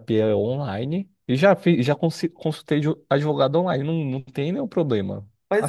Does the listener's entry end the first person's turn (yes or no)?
yes